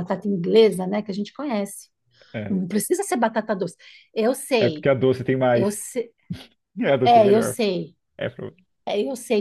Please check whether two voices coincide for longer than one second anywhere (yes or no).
no